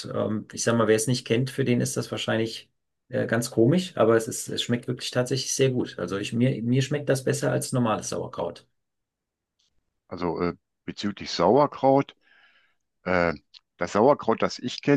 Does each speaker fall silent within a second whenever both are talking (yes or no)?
yes